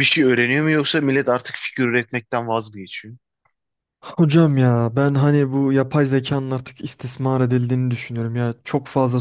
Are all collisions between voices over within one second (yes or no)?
yes